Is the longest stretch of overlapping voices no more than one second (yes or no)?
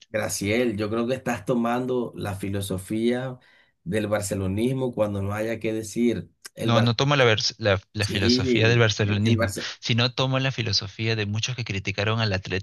no